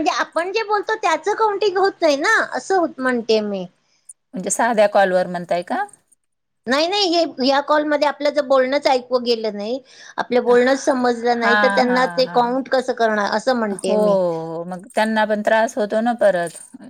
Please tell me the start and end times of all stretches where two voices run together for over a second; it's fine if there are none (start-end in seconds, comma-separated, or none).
10.5-12.6